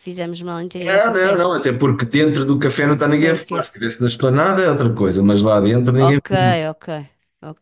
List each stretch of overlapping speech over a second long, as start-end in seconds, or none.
none